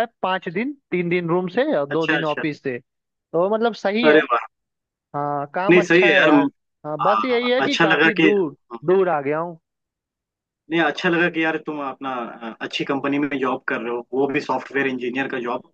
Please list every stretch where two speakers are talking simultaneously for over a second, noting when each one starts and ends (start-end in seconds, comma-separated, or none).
7.0-8.3